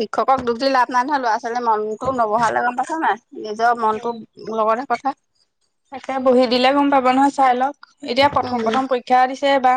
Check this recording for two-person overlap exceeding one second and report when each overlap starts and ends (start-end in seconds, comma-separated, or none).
none